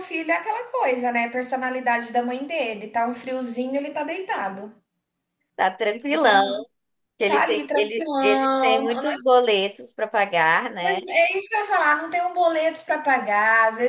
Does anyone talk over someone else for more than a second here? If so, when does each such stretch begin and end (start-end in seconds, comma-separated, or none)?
7.3-9.1